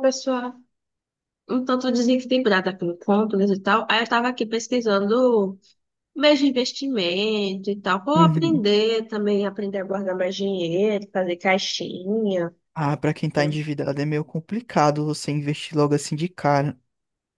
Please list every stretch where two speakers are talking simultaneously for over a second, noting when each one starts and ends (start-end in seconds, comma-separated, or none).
none